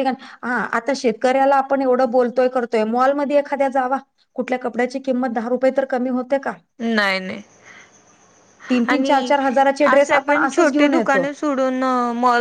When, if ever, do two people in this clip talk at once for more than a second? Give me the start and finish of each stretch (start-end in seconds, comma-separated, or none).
9.9-11.3